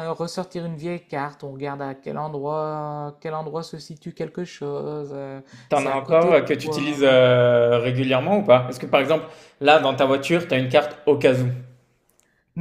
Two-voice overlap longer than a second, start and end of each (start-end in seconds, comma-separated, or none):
5.7-7.2